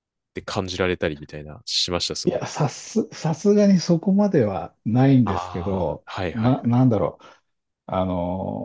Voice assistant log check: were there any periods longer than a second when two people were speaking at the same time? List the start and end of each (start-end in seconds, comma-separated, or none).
5.2-6.8